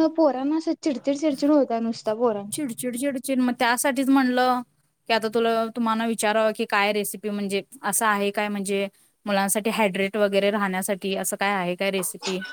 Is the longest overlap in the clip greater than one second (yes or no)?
no